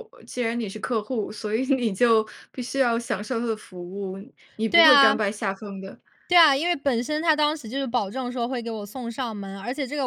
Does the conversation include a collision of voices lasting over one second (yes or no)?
no